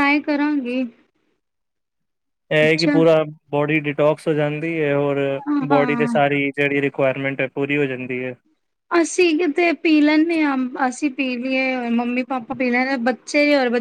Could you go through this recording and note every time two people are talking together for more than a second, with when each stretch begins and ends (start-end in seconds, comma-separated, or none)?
none